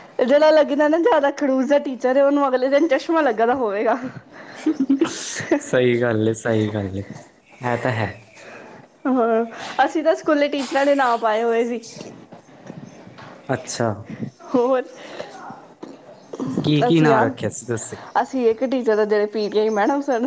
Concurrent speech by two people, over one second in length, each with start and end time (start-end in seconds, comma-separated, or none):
none